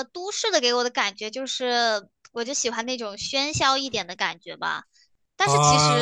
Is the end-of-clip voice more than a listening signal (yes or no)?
yes